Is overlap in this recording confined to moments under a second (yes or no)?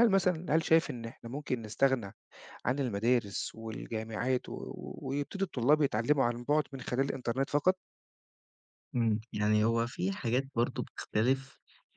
yes